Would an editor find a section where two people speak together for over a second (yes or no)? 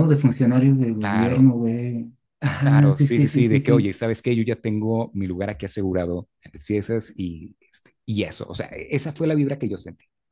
yes